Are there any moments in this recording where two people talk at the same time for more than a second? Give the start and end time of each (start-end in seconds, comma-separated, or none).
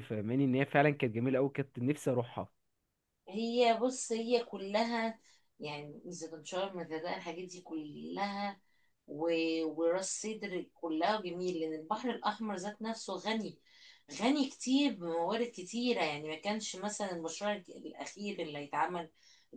none